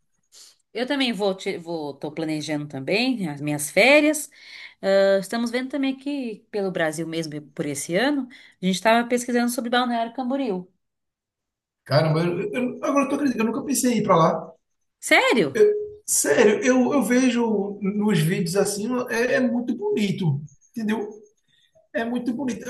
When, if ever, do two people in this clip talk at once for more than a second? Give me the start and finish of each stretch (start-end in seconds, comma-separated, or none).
none